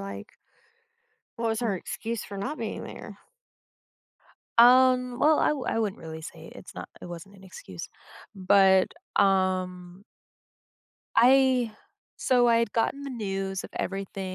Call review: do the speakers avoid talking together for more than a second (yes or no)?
yes